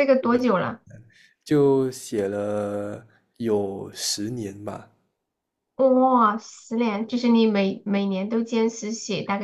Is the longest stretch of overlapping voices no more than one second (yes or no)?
yes